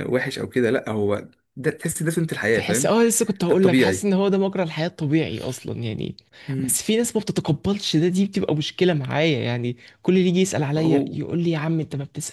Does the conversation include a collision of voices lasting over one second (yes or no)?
no